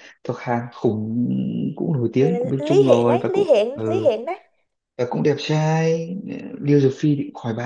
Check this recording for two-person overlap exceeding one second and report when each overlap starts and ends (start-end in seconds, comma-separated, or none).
2.2-4.1